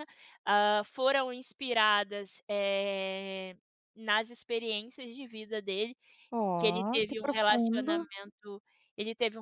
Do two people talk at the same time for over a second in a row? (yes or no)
yes